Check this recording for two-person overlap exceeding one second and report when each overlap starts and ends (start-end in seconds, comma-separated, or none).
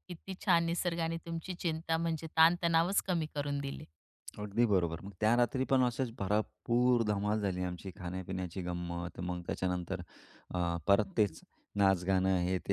none